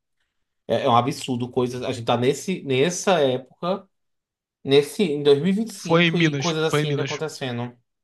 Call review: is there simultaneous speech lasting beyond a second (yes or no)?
yes